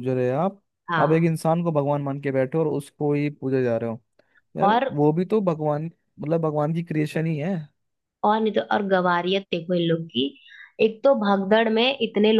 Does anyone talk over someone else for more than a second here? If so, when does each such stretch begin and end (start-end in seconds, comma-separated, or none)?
none